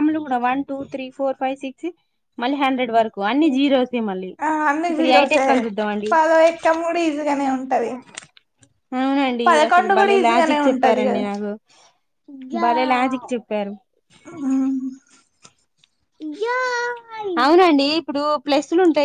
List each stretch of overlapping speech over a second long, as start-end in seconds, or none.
9.5-11.2